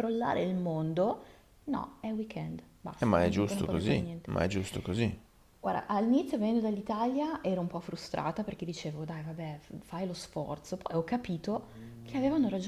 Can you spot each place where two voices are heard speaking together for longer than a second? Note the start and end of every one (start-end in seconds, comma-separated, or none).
3.0-4.3